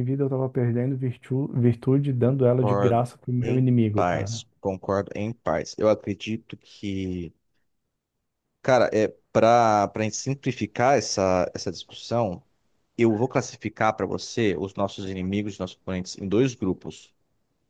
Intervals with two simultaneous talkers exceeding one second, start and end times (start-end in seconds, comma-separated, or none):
2.3-4.4